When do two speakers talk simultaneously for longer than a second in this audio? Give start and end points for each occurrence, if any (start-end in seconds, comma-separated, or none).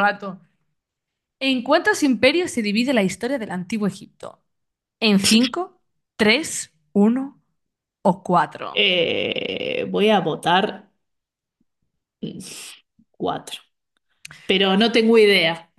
none